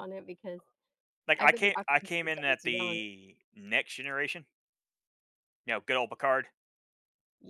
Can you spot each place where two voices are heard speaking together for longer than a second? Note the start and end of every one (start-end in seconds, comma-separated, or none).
1.4-3.0